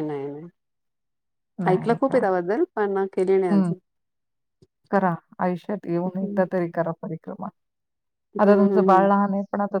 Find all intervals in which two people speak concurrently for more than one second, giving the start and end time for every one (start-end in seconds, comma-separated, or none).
none